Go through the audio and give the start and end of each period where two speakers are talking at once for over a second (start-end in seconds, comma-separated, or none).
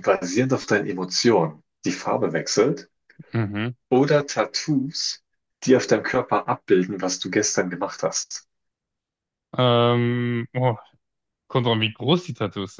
none